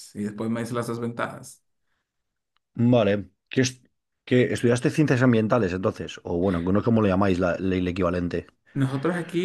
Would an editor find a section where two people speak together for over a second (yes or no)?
no